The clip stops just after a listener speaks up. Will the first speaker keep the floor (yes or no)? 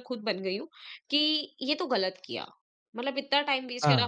yes